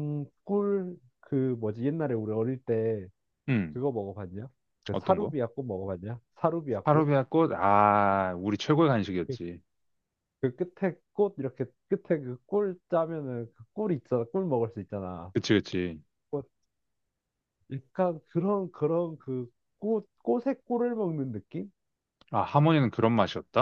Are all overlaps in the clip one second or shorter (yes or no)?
yes